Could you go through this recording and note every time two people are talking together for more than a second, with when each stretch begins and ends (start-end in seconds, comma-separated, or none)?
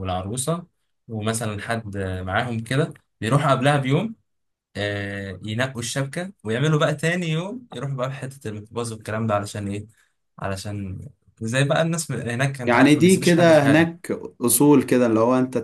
12.6-14.0